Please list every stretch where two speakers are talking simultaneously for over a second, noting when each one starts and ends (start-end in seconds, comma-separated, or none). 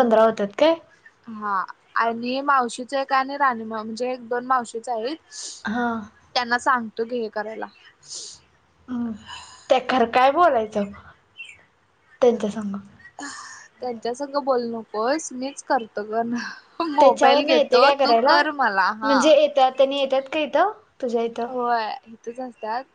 none